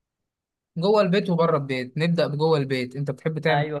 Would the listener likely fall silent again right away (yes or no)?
no